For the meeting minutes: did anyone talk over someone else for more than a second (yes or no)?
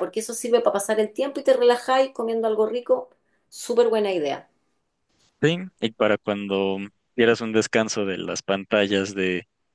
no